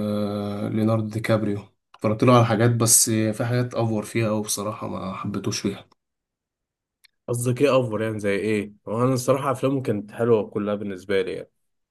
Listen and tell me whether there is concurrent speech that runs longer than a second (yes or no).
no